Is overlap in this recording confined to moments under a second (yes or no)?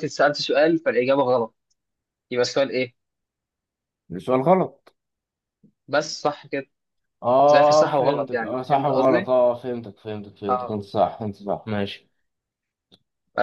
no